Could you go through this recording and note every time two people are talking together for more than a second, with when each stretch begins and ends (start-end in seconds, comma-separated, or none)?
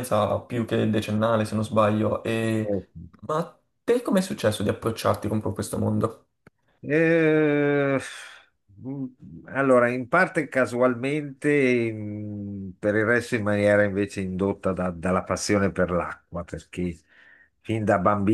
none